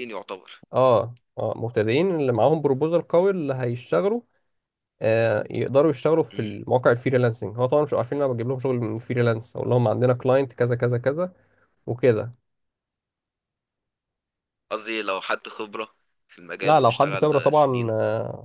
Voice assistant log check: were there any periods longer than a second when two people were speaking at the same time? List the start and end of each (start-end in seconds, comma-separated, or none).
16.6-17.9